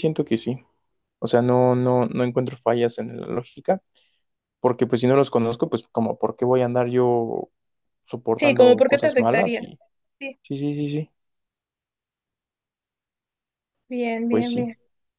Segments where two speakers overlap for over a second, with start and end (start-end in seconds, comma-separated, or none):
8.4-9.6